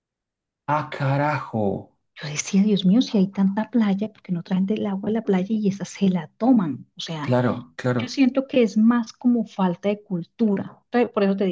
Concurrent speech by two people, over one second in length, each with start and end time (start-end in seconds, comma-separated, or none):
none